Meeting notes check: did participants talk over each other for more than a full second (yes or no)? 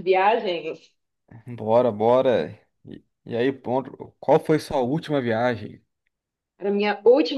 no